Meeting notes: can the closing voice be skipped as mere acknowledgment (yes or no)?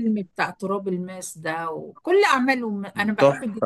yes